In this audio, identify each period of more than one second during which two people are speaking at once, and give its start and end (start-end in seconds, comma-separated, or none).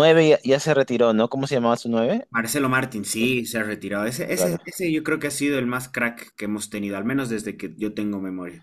none